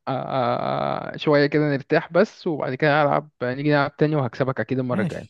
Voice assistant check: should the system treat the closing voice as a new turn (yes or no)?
yes